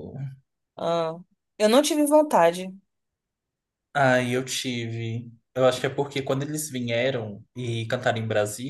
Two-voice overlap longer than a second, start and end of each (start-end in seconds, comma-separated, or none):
none